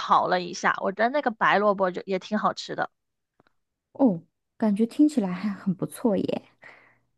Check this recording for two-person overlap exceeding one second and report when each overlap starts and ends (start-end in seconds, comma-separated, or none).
none